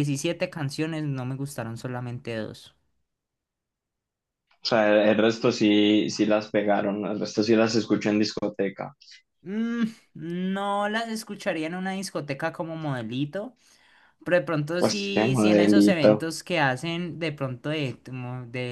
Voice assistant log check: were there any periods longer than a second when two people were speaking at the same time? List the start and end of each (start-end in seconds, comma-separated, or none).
14.8-16.3